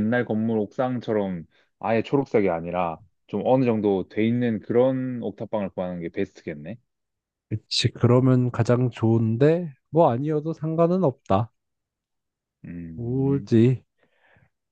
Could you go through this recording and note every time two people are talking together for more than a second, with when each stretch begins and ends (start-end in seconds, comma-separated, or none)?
none